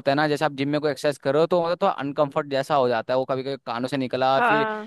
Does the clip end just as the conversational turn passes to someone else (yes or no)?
no